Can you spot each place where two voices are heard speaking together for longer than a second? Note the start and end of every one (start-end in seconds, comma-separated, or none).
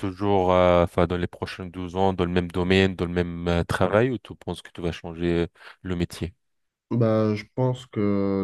none